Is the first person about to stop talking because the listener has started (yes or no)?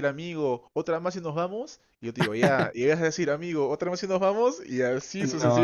yes